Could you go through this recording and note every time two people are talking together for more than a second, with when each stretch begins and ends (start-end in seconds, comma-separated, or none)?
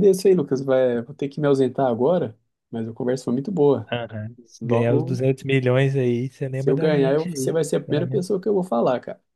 6.5-8.2